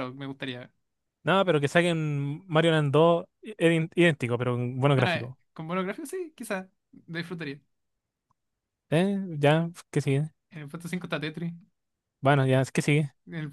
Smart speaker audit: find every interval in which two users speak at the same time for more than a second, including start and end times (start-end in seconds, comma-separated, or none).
none